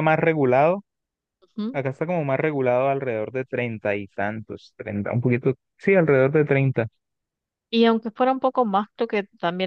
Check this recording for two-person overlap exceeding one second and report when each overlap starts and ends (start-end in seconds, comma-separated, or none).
none